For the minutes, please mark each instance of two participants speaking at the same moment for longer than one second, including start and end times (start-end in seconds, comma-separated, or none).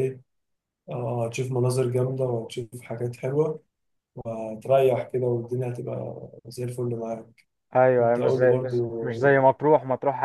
8.0-9.3